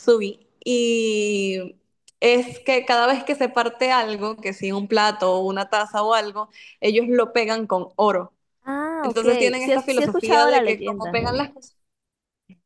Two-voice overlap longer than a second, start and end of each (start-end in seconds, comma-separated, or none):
9.0-11.2